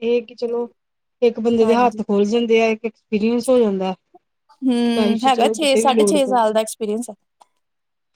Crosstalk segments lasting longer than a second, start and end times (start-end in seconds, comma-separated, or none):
5.0-6.5